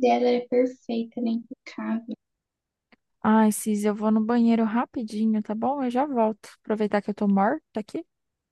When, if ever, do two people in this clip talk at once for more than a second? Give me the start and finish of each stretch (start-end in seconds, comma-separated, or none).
none